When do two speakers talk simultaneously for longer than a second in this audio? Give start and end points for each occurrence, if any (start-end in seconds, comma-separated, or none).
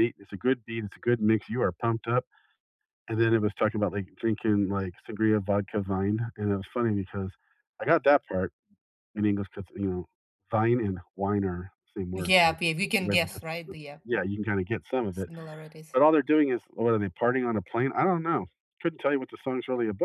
12.1-14.0